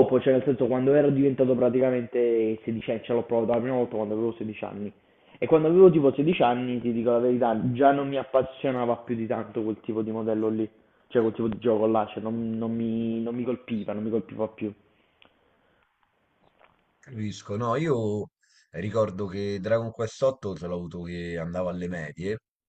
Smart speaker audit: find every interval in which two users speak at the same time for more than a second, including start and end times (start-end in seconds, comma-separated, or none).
none